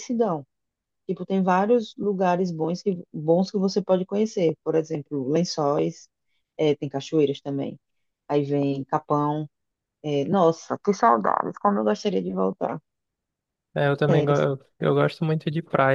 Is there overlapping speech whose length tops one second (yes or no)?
no